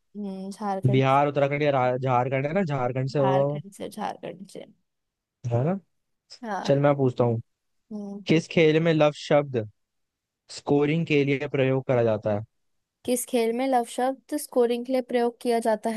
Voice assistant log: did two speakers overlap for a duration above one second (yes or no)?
no